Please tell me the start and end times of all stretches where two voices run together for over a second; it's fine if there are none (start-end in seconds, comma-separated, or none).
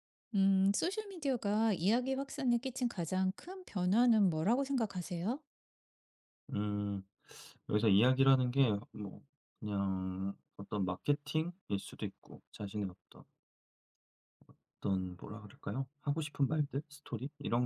none